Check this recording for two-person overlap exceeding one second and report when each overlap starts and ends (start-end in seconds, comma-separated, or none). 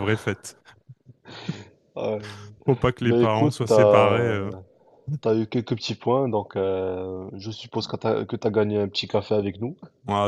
3.0-4.3